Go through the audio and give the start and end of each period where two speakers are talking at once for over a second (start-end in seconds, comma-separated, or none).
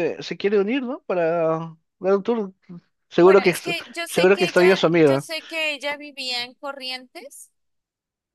3.2-5.3